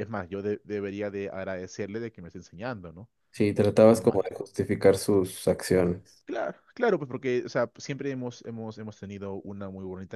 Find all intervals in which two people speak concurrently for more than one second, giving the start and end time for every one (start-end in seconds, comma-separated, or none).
none